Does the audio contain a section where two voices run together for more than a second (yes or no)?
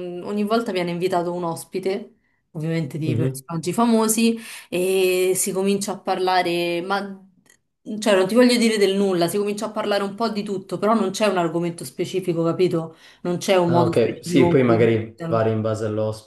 yes